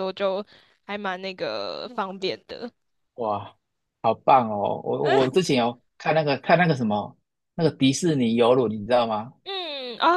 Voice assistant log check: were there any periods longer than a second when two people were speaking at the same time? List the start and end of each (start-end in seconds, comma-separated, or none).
none